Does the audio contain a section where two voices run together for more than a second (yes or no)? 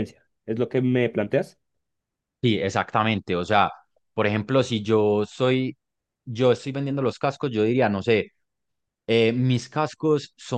no